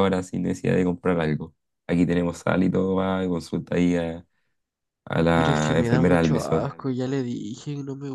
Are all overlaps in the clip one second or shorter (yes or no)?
no